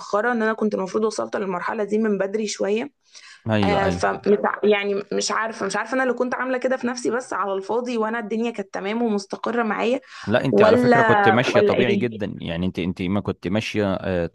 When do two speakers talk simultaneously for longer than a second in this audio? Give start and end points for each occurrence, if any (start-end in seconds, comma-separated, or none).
10.5-12.2